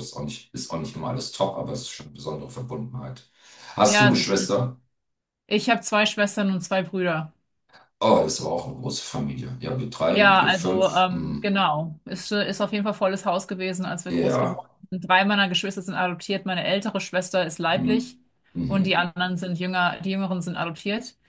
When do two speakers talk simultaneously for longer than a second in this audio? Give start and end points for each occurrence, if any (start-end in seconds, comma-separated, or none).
10.1-11.6